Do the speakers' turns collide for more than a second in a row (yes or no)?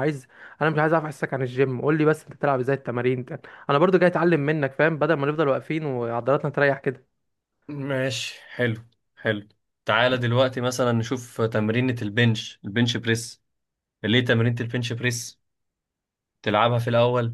no